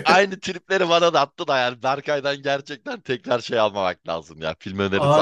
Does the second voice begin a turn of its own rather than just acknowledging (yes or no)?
yes